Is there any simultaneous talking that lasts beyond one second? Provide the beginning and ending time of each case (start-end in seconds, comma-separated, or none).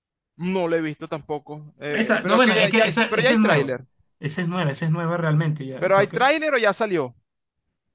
1.9-3.8